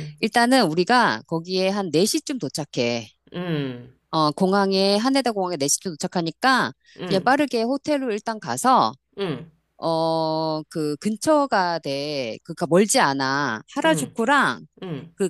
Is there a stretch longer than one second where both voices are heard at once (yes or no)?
no